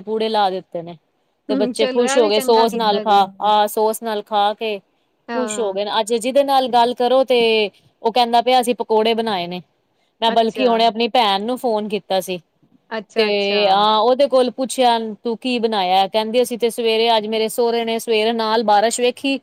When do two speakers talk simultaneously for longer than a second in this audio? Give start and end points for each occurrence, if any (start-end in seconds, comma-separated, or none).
1.5-3.2